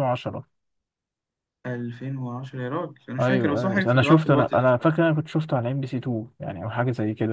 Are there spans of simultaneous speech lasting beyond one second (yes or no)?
yes